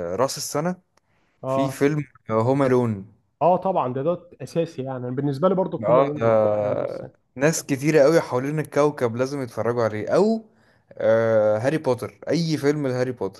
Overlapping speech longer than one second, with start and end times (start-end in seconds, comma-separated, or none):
5.8-7.3